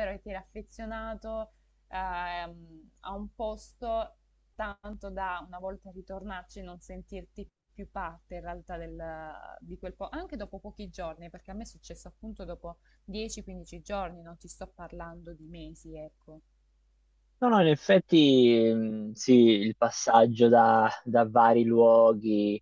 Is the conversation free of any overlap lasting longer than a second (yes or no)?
yes